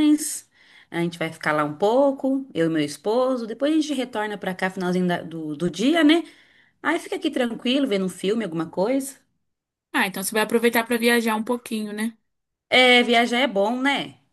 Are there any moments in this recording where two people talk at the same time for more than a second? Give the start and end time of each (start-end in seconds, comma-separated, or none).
none